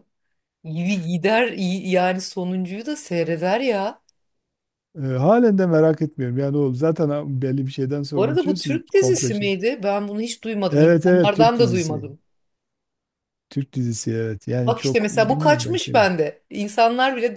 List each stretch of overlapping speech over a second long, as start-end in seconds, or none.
8.2-9.5, 10.7-12.1, 14.6-16.1